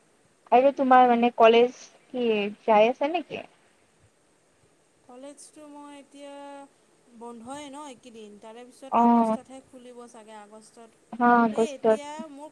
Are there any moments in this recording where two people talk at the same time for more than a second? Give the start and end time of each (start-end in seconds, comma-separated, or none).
none